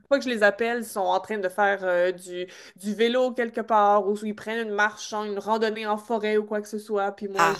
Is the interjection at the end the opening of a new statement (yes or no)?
yes